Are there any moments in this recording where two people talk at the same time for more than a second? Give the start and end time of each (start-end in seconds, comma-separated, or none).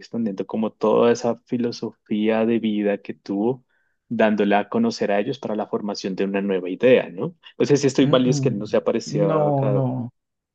8.0-9.8